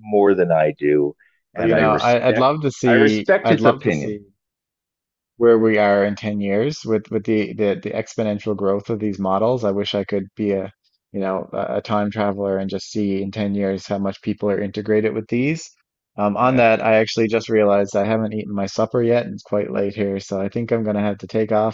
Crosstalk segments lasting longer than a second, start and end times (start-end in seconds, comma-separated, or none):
1.6-4.2